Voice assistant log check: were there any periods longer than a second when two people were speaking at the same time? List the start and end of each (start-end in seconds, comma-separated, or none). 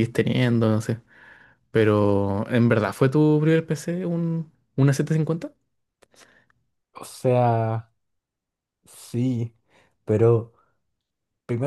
none